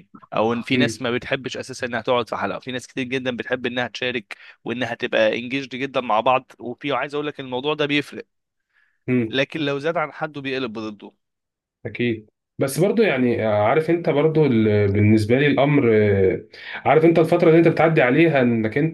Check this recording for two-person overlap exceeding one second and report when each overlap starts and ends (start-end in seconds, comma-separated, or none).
none